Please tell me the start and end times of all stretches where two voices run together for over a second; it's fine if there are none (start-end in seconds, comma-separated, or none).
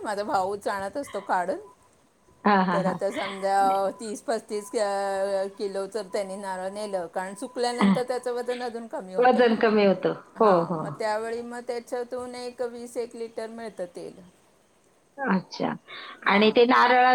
none